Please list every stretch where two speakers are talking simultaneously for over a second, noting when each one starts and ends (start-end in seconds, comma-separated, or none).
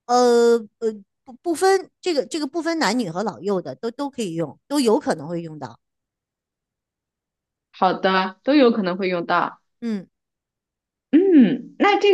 none